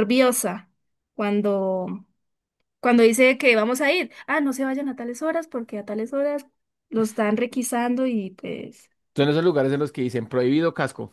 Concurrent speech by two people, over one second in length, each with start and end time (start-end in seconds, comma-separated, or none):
none